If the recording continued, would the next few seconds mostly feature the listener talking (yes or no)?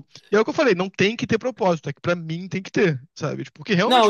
yes